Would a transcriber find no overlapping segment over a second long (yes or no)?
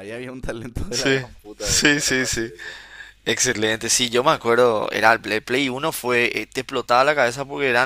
no